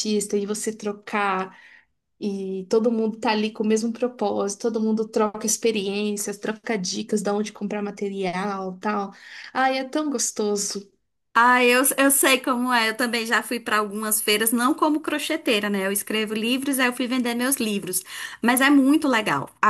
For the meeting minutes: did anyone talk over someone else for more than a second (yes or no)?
no